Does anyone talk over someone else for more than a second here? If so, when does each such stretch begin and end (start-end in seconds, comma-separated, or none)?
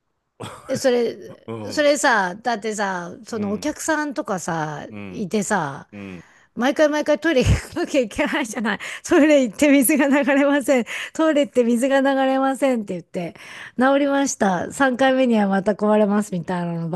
none